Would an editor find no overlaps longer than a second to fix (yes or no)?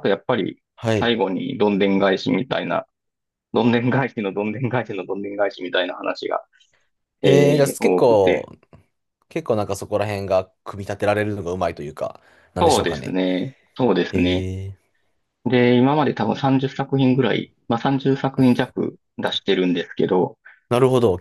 no